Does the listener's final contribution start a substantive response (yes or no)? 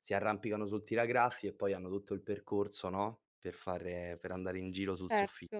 yes